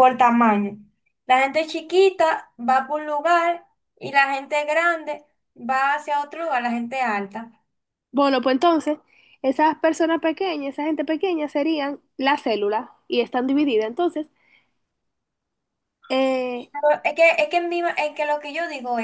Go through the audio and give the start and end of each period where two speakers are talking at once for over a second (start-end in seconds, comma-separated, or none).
none